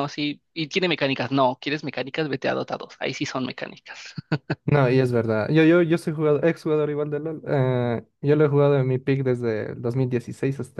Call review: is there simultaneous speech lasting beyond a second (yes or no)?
no